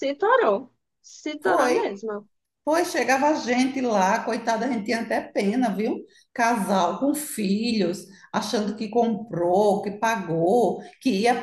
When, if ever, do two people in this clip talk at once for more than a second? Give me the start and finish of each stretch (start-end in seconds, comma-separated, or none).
none